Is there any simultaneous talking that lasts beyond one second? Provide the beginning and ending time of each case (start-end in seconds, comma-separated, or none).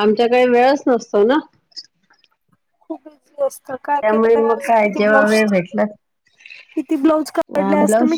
3.9-5.8